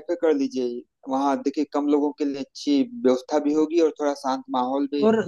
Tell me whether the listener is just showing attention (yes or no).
no